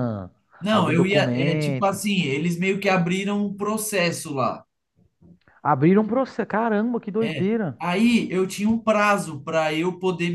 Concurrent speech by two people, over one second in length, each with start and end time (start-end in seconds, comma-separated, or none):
0.7-2.0